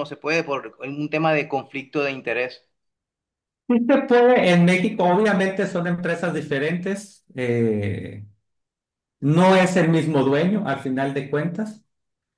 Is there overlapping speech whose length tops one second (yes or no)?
no